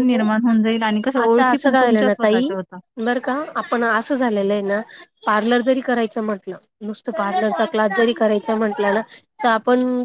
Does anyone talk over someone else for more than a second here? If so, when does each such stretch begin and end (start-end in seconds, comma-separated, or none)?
1.2-2.5